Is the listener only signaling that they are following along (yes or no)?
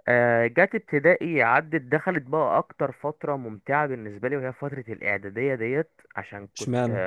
yes